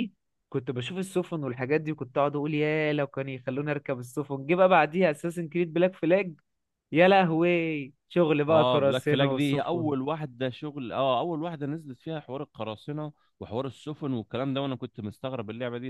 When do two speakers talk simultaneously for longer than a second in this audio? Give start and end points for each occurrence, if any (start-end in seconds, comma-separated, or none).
8.5-9.9